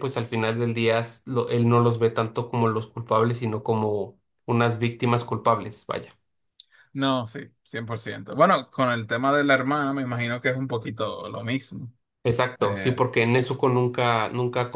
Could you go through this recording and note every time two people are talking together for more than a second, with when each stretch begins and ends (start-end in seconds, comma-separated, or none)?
none